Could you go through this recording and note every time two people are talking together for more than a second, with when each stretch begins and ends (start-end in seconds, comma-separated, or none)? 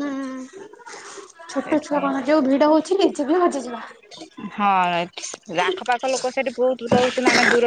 none